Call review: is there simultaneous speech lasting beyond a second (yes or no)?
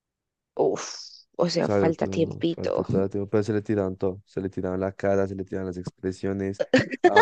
yes